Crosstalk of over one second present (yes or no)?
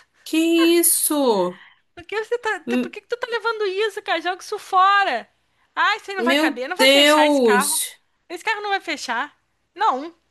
yes